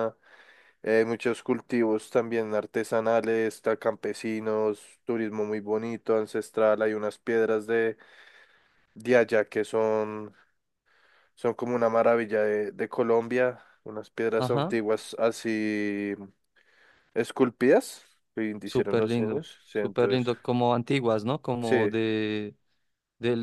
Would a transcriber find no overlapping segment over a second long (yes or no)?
no